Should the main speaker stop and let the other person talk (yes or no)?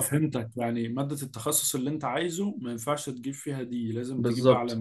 yes